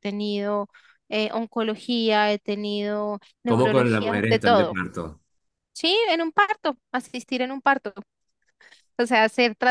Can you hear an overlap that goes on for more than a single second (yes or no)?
yes